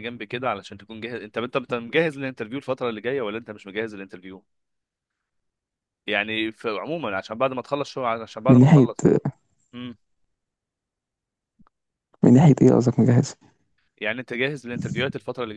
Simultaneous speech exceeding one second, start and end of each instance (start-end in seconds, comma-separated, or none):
none